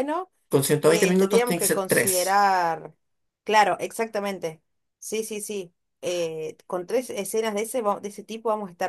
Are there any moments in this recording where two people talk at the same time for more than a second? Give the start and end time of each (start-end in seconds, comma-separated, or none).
0.9-2.4